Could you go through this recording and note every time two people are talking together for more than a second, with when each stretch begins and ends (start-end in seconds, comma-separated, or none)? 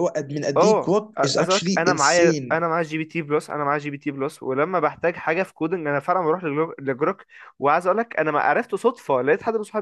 0.6-2.6